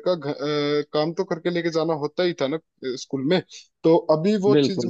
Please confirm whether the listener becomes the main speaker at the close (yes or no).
no